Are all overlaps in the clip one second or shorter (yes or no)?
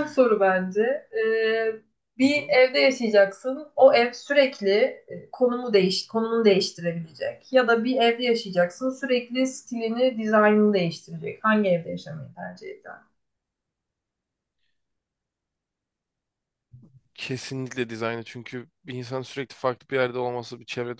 yes